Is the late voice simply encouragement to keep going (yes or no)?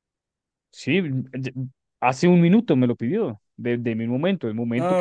no